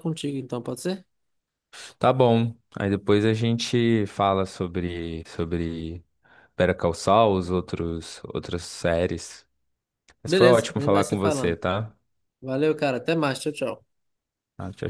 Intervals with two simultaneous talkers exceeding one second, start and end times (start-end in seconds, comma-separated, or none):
10.2-11.6